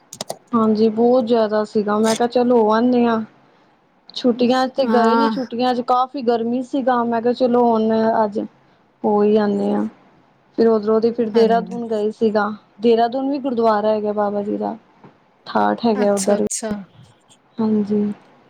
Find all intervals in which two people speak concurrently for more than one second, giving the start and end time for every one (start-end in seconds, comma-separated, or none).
none